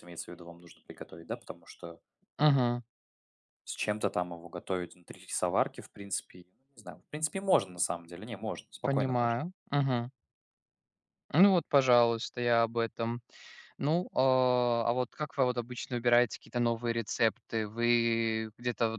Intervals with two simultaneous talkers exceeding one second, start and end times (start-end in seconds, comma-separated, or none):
none